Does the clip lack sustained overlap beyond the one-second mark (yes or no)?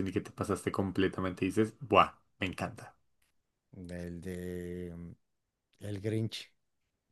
yes